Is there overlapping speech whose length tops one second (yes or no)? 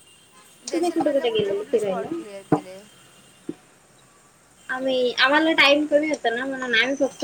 yes